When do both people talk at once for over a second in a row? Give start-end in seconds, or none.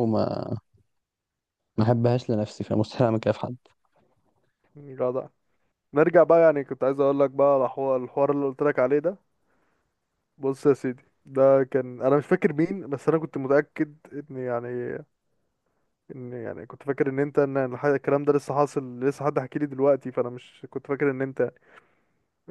none